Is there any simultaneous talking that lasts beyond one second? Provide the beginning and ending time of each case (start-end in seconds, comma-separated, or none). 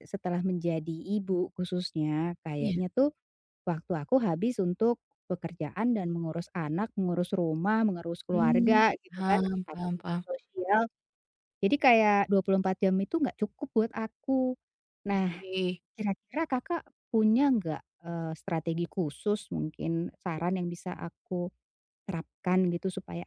8.3-10.2